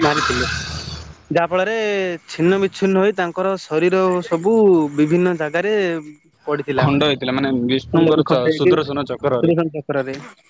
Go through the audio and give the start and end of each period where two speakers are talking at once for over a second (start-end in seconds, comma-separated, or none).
7.9-9.5